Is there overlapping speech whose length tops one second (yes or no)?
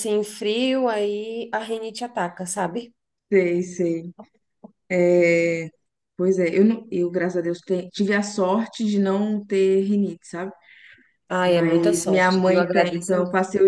yes